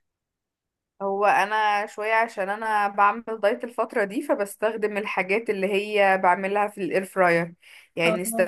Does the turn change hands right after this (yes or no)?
no